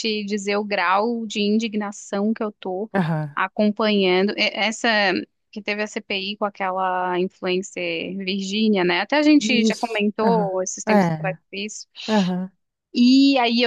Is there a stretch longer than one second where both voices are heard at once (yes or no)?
yes